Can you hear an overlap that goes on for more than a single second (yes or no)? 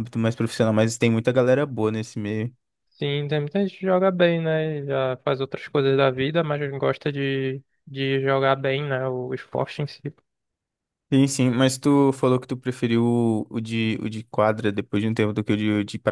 no